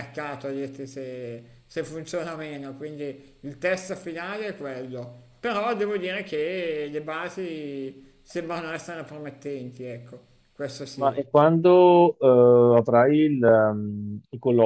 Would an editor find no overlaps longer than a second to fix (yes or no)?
yes